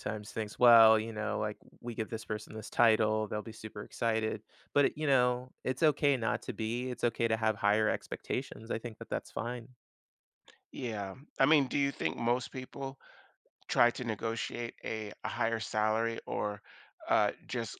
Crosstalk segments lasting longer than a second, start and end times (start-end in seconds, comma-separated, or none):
none